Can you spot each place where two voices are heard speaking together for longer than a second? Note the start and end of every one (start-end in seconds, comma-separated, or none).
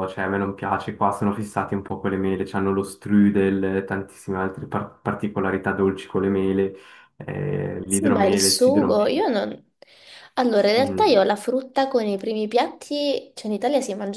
7.9-9.1